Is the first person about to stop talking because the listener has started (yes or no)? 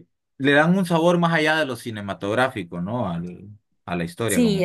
yes